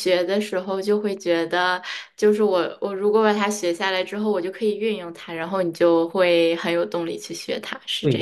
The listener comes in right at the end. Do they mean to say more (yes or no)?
yes